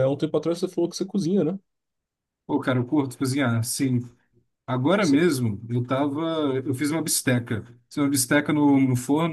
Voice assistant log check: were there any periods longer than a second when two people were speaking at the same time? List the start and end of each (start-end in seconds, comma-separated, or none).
none